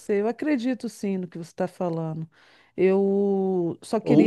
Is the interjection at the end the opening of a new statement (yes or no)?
yes